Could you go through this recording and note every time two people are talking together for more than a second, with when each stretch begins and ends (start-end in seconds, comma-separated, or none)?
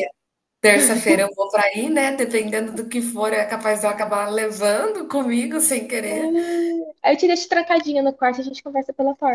none